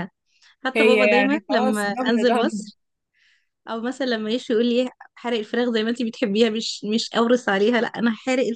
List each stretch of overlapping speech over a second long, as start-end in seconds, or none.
0.7-2.5